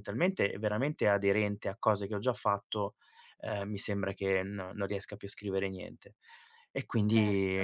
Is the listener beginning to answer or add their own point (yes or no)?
no